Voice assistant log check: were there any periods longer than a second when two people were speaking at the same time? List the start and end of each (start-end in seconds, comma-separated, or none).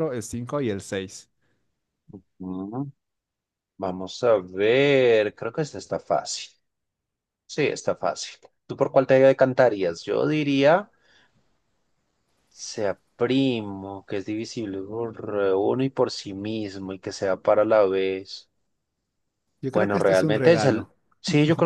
19.7-20.9